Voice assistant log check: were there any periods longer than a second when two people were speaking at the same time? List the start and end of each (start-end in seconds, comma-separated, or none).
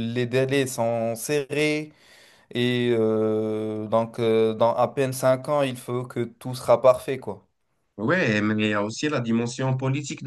none